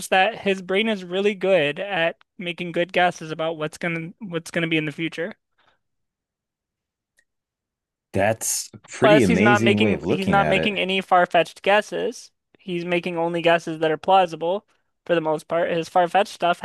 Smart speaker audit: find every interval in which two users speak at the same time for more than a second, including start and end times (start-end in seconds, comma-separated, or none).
9.0-10.7